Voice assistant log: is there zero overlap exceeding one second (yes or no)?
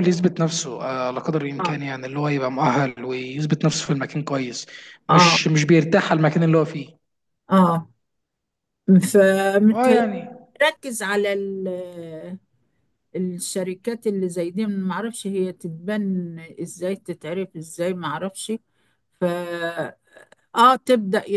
yes